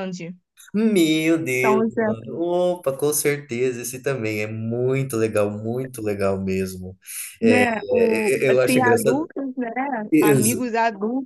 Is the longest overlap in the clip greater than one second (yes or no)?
yes